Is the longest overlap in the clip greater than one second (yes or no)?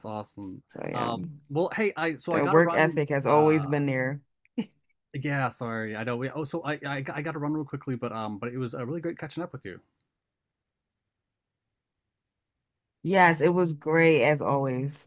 yes